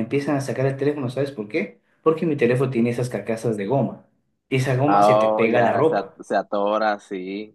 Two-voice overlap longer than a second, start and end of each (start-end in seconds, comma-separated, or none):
4.9-6.2